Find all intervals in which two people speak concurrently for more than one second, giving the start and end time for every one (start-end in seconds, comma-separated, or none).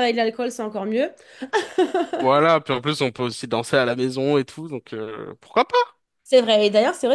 none